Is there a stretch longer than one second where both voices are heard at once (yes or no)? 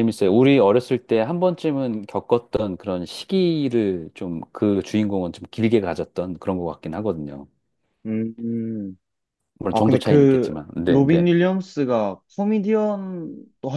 yes